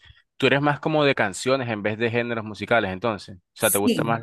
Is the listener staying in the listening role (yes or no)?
no